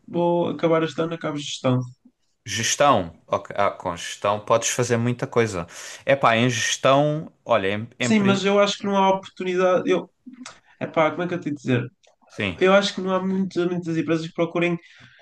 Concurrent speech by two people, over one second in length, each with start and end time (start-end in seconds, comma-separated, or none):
none